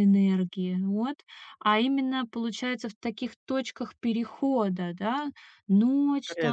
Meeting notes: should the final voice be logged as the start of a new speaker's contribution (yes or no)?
no